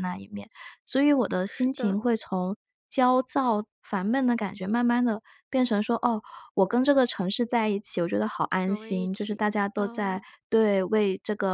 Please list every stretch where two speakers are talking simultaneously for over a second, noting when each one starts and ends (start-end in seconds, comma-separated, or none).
8.6-10.2